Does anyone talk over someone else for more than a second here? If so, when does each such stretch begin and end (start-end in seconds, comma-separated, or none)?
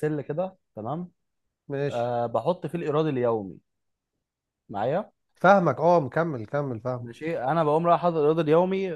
none